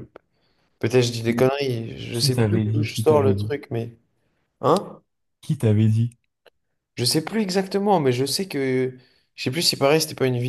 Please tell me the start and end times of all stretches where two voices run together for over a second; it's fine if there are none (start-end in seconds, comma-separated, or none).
2.1-3.5